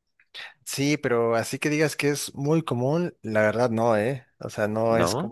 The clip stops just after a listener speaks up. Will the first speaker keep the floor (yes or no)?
yes